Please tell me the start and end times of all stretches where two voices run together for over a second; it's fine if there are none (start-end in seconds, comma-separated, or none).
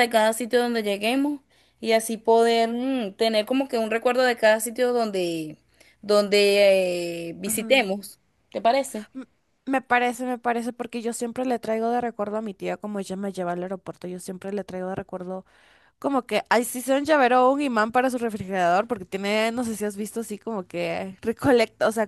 none